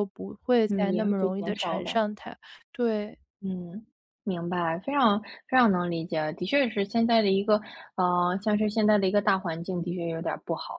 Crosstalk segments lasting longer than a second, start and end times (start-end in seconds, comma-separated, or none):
0.7-2.0